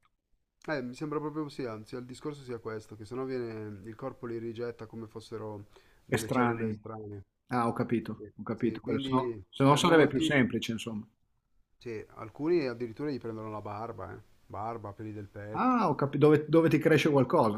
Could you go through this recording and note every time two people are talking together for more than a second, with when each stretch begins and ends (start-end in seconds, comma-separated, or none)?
8.1-10.4